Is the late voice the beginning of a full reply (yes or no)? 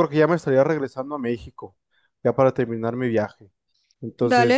yes